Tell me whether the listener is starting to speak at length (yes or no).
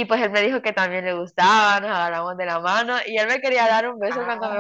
no